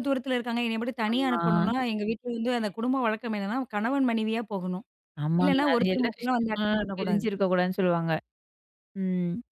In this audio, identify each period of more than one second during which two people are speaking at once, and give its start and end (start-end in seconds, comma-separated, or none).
5.4-7.2